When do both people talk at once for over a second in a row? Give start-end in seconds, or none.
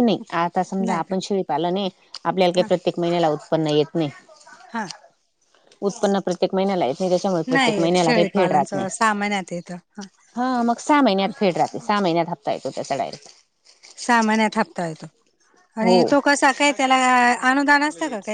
7.5-8.9